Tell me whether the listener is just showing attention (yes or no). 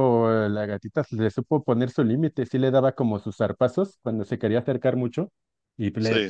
yes